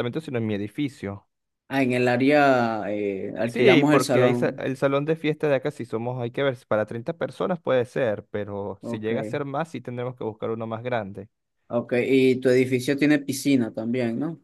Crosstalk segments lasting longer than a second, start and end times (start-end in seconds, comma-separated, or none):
3.4-4.6